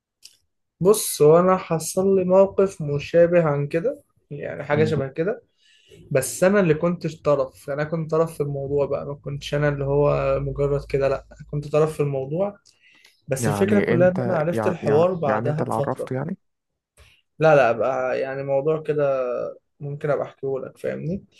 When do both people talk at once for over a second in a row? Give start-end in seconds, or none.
13.4-16.1